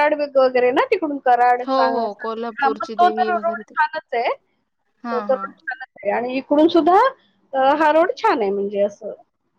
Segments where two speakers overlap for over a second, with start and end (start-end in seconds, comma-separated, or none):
1.7-3.7